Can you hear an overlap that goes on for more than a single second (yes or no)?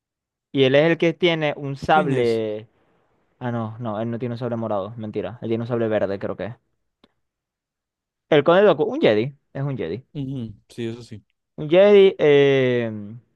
no